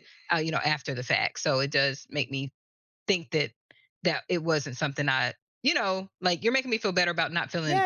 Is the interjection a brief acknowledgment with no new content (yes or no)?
no